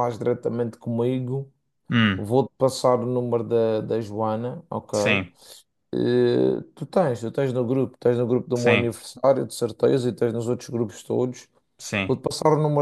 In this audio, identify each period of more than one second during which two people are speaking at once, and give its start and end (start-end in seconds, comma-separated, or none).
none